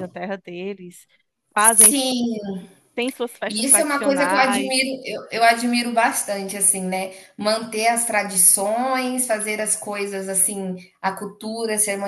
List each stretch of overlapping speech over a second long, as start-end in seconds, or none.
3.5-4.8